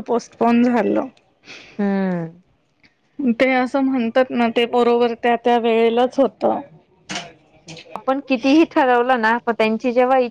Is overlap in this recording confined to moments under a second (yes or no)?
yes